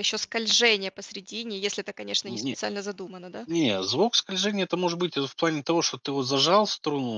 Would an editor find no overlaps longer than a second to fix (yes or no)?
yes